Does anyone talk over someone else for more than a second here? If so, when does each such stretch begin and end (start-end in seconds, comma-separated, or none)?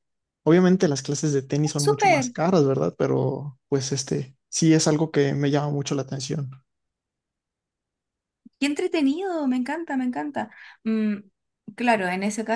none